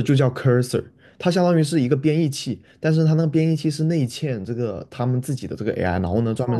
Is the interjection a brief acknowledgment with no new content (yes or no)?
no